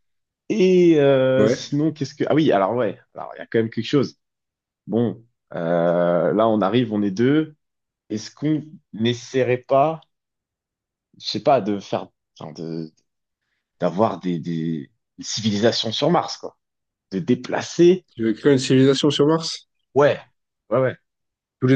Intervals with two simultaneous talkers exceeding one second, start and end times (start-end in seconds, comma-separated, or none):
none